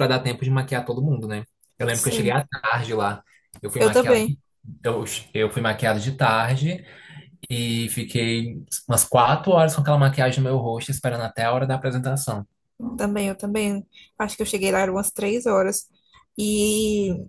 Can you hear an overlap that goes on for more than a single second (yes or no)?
no